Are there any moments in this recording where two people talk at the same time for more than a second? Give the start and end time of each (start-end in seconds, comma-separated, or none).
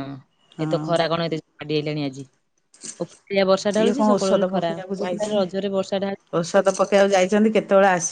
3.8-5.5